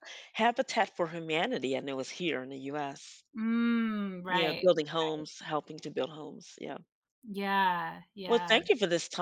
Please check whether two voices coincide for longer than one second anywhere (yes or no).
no